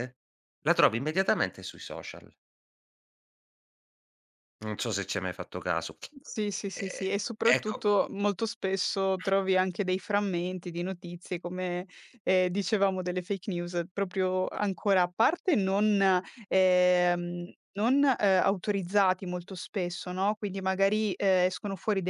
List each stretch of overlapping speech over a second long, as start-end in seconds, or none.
none